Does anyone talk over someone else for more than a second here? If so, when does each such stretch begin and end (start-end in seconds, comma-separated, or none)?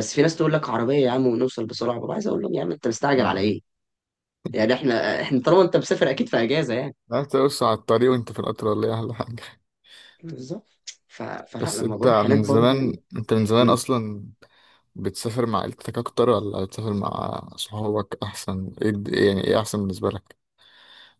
11.6-12.9